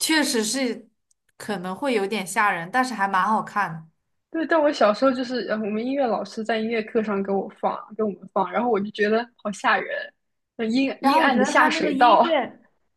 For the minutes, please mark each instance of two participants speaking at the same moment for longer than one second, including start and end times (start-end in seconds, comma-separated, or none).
11.0-12.2